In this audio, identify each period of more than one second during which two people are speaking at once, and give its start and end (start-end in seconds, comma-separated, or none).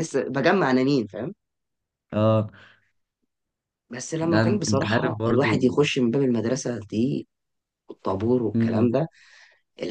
4.2-5.7